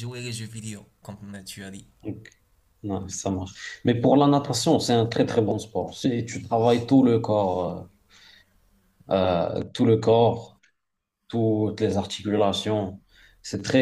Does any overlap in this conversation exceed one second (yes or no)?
no